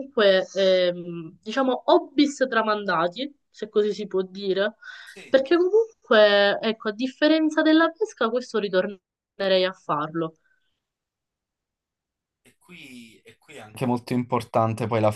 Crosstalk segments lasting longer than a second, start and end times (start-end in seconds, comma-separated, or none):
none